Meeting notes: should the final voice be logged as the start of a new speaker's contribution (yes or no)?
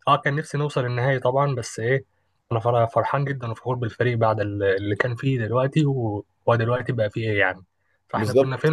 yes